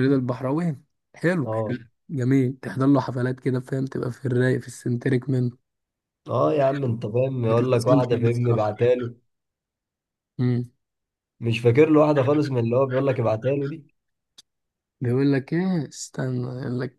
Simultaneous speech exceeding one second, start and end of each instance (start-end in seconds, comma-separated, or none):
7.5-8.7